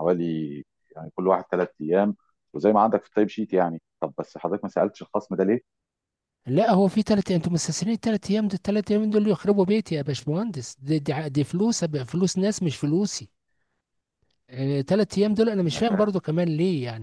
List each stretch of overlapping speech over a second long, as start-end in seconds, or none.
none